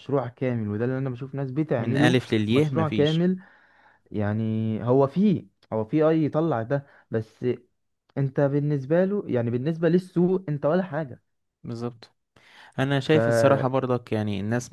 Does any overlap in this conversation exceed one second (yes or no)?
yes